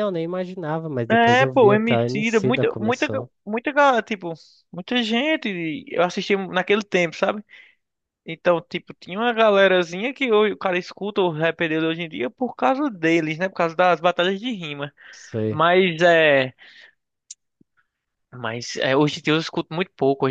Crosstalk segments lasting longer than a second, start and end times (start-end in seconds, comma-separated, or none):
1.1-3.1